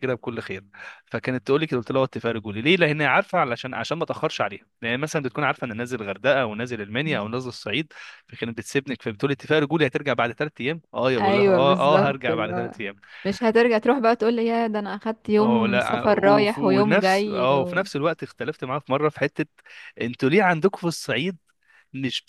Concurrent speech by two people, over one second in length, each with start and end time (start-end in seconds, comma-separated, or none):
11.2-12.7, 15.4-17.8